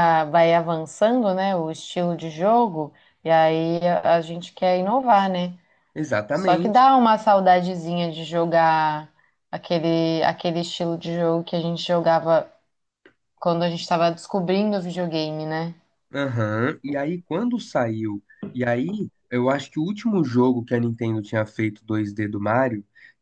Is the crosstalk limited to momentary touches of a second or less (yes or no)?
yes